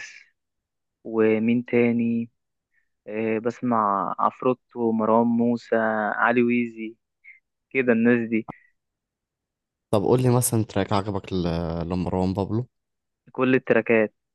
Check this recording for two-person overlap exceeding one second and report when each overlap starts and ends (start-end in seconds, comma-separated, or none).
none